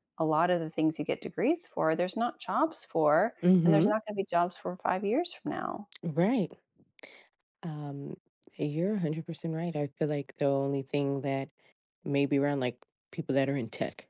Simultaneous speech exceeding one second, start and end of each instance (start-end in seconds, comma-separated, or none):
none